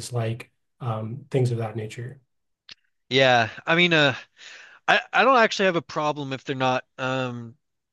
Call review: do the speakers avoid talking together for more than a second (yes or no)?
yes